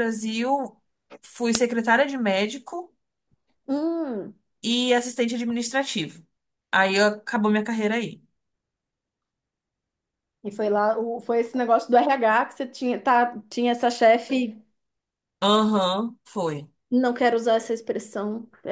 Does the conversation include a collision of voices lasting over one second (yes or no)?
no